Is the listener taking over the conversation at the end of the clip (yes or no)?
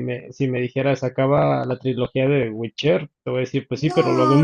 yes